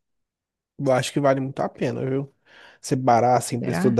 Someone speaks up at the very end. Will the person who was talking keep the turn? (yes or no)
yes